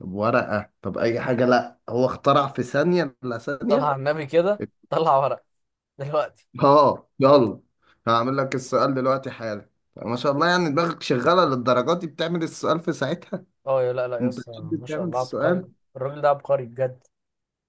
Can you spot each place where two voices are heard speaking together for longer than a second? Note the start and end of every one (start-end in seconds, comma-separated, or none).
14.2-15.7